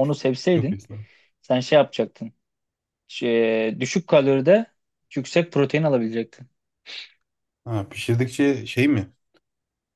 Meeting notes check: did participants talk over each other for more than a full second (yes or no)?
no